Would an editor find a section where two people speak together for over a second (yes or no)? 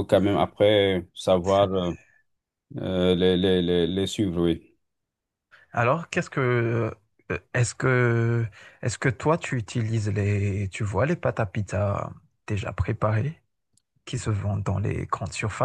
no